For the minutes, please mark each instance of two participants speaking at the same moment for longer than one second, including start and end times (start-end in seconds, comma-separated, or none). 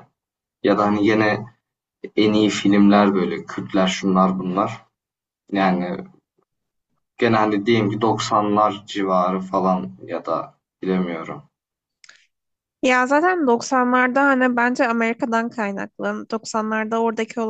none